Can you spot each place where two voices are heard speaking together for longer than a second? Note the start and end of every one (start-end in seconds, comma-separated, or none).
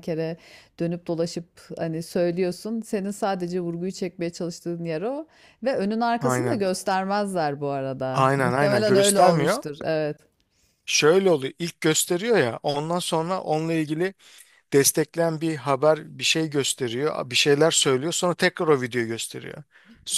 8.1-9.6